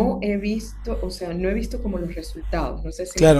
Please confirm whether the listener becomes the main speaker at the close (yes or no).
yes